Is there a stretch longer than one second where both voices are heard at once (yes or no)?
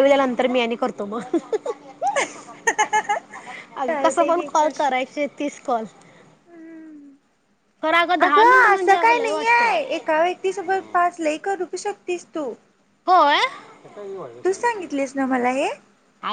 yes